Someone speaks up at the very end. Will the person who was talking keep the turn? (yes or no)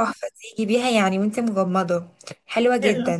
no